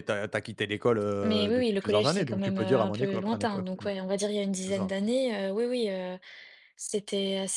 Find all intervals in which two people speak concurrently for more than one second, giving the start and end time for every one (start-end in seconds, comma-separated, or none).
1.2-3.9